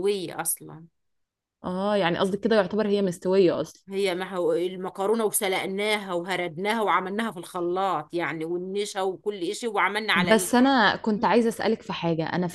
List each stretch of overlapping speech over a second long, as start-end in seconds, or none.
none